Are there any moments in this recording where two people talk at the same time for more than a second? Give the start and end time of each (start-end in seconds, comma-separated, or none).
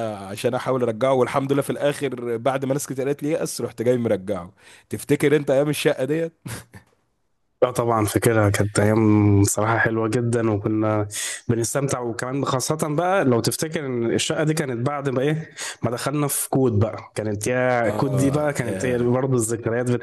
17.9-19.1